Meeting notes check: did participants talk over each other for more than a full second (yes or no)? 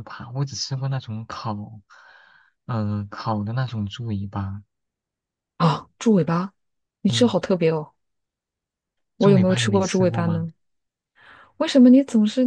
yes